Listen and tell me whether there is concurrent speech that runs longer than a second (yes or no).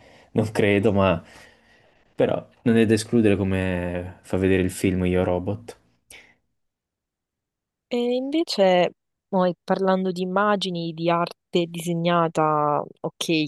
no